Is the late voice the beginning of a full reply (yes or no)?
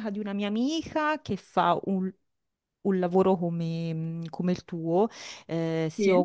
no